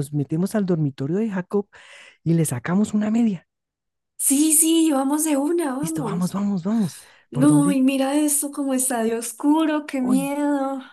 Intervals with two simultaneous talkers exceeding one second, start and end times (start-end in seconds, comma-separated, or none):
none